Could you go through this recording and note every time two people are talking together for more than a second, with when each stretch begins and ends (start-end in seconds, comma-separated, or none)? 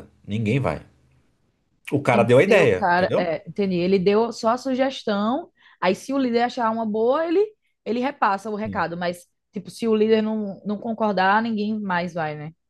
2.1-3.3